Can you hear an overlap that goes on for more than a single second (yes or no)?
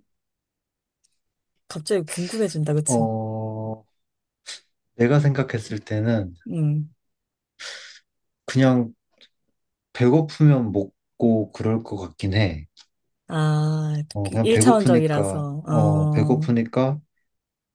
yes